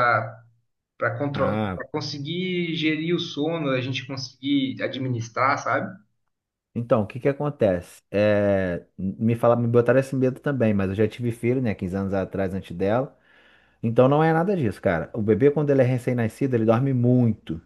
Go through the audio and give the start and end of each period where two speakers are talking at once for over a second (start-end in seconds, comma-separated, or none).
none